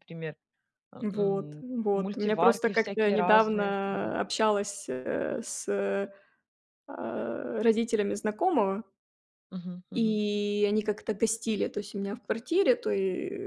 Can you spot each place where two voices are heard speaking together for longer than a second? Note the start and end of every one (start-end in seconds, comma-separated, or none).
1.0-4.2